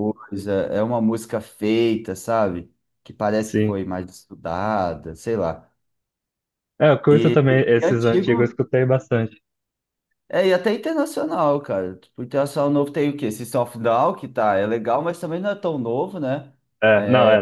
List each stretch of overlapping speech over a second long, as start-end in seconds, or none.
7.1-8.6